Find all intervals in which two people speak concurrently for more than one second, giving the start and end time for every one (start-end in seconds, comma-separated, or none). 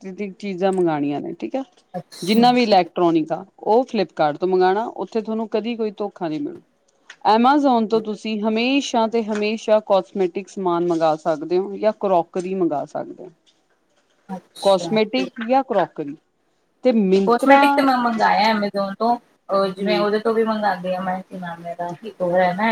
none